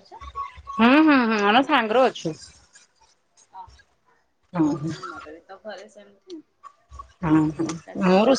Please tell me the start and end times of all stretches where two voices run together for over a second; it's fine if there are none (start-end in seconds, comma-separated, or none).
none